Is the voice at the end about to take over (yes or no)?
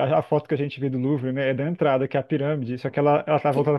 no